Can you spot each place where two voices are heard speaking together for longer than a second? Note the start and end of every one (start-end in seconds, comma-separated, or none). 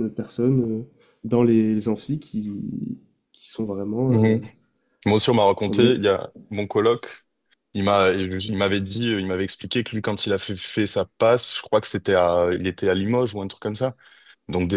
none